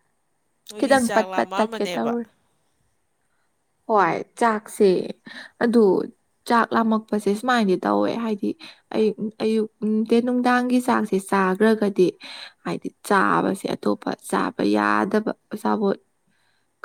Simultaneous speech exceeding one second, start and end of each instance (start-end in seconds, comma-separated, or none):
0.8-2.2